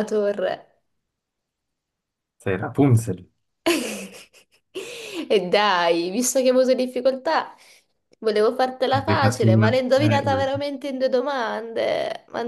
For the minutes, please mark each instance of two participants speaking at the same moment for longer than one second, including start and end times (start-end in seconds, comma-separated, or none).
9.1-10.5